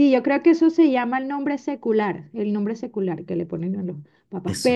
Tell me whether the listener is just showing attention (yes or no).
yes